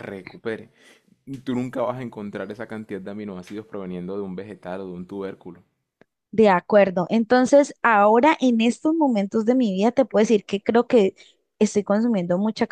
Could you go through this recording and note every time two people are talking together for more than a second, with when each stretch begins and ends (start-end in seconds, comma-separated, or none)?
none